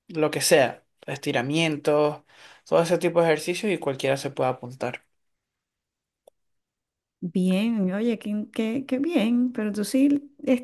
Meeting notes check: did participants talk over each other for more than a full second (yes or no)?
no